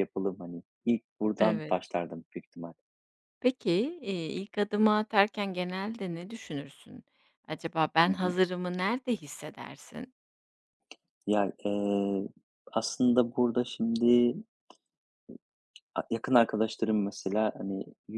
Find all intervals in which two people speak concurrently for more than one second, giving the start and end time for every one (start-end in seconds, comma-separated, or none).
none